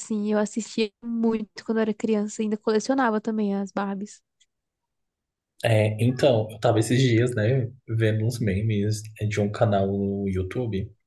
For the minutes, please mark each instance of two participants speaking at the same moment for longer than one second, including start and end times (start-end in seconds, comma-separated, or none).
none